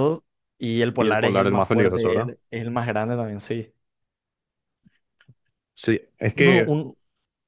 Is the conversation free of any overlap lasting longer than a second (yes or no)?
no